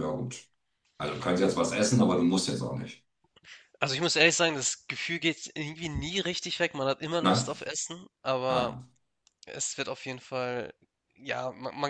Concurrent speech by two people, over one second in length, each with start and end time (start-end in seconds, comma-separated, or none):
none